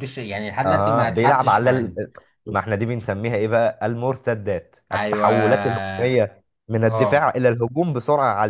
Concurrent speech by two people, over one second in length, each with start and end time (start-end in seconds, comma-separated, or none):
0.6-2.0